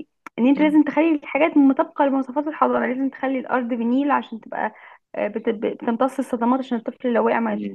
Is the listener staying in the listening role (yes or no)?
yes